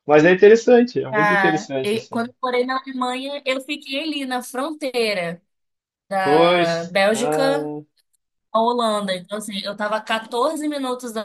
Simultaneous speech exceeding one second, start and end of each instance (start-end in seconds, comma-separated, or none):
1.1-2.3, 6.2-7.7